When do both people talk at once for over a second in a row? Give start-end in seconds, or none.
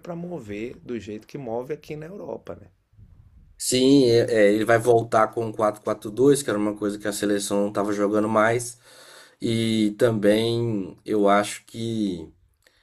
none